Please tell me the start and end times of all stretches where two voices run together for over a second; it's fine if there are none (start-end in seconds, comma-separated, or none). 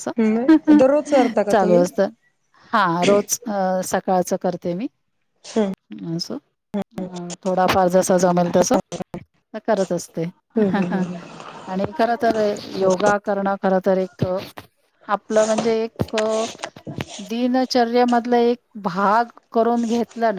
none